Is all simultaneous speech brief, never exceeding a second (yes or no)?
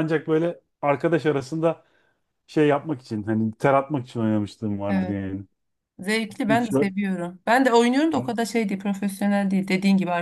yes